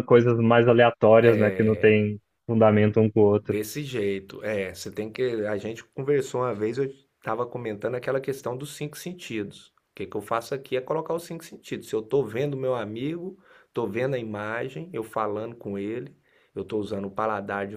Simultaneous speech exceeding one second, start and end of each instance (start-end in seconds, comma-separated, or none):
none